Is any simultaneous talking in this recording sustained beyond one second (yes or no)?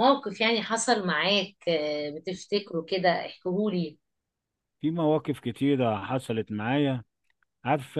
no